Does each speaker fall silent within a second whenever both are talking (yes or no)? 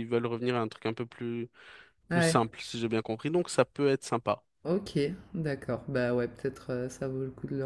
yes